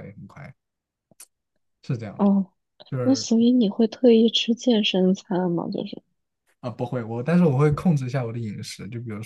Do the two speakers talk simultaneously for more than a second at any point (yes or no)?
no